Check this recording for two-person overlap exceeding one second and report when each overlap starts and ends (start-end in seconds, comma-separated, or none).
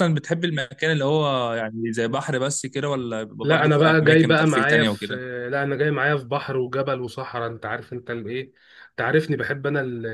3.4-5.1